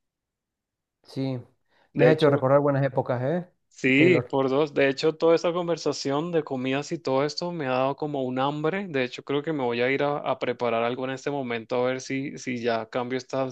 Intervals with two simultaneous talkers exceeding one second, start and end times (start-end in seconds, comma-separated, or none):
none